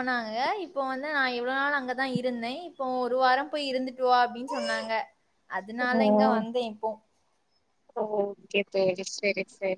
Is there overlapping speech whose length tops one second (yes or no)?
no